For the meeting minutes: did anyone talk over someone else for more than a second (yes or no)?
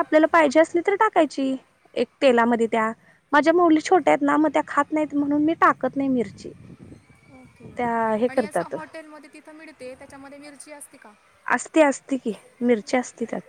no